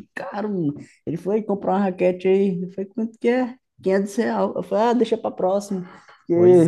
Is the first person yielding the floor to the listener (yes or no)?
yes